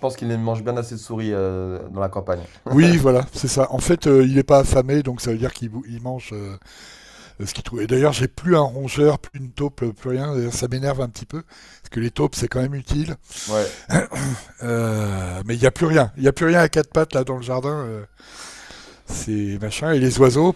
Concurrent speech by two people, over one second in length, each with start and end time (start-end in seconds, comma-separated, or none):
none